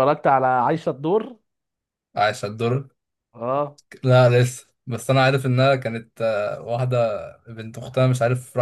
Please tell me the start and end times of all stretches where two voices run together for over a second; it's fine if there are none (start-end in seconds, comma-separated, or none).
none